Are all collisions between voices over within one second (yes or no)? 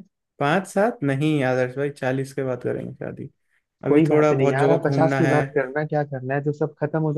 no